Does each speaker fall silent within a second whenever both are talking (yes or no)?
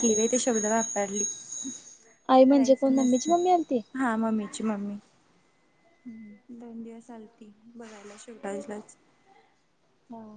no